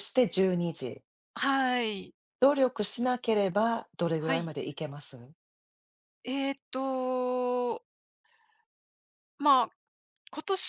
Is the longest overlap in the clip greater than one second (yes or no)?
no